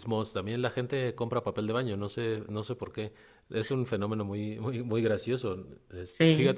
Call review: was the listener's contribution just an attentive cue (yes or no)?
yes